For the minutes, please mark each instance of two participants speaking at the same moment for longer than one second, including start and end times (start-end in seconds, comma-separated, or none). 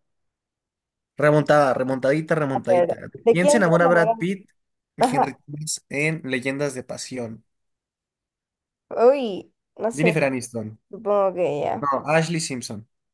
2.5-4.3